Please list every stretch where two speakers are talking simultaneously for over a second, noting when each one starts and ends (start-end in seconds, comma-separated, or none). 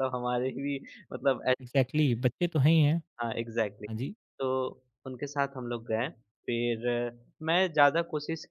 none